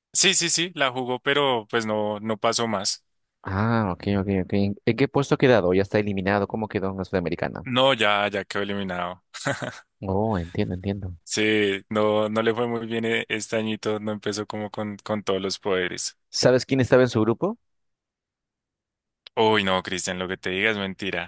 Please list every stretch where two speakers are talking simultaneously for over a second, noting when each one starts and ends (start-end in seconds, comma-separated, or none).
none